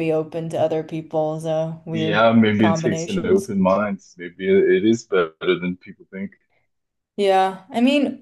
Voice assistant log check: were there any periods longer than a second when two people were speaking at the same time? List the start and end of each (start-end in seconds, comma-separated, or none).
1.9-3.5